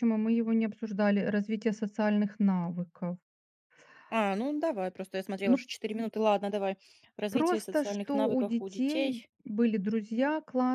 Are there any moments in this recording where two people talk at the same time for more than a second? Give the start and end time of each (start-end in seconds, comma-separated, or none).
7.3-9.3